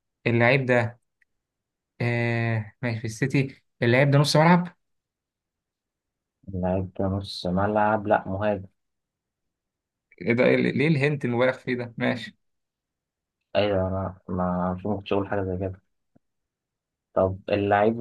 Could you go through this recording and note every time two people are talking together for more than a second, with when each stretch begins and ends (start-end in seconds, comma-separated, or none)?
none